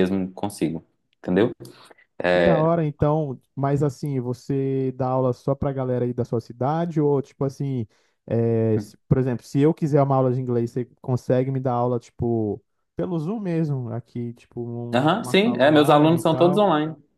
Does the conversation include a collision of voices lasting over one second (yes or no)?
yes